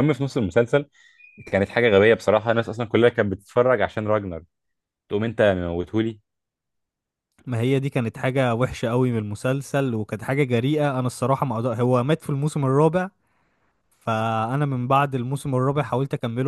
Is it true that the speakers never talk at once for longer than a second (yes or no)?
yes